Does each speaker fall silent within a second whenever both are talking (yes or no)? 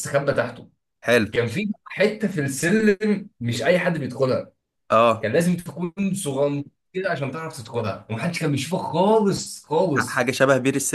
yes